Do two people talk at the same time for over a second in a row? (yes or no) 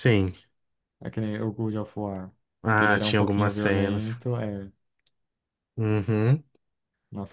yes